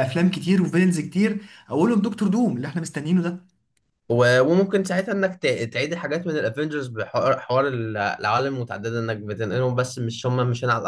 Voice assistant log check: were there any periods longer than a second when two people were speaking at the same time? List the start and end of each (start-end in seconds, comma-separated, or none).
none